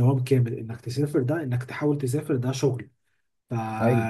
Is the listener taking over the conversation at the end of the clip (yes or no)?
no